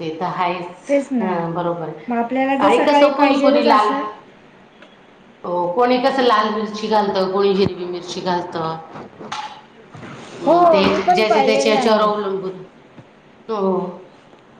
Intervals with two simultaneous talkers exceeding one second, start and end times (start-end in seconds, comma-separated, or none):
2.7-3.9, 10.4-12.3